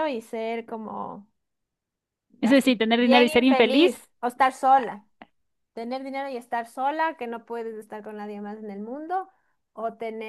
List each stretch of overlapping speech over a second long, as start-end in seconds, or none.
2.4-4.0